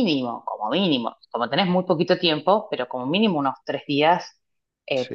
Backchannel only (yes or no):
yes